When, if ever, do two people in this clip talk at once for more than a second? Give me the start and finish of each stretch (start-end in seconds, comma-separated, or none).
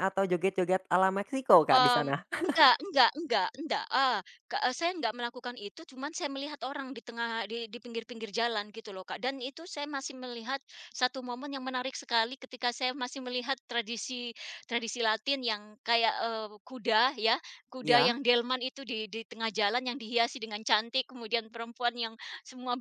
none